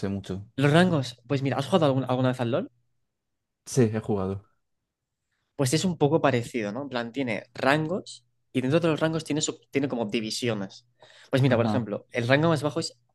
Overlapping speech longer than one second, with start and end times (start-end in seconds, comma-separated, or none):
none